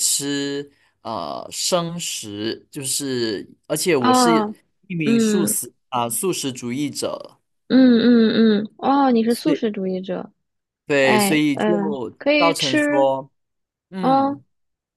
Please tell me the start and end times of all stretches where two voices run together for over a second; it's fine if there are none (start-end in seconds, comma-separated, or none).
11.0-13.1